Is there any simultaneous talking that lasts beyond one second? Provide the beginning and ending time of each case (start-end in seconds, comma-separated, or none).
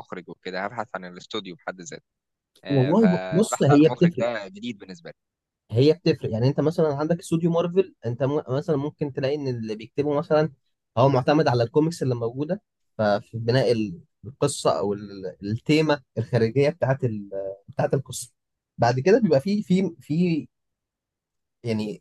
2.7-4.3